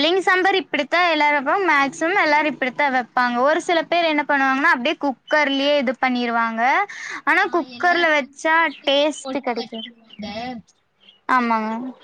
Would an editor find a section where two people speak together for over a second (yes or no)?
yes